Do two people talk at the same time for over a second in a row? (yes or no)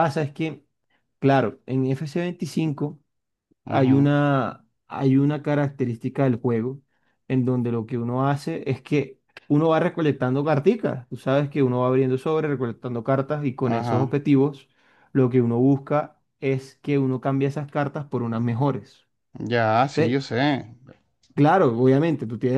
no